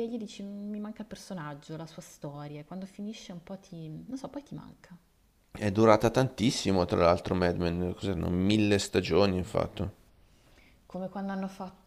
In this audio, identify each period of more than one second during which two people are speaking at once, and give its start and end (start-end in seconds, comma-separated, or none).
none